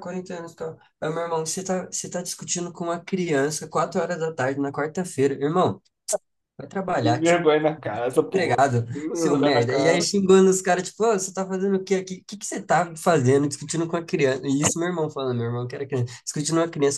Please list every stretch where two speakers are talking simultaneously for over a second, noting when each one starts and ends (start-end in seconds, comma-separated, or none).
8.2-10.1